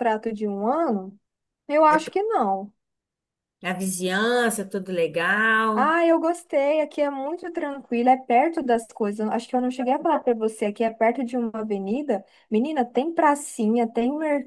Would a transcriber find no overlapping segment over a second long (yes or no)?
yes